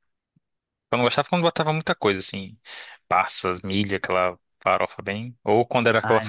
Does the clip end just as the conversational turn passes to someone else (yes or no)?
no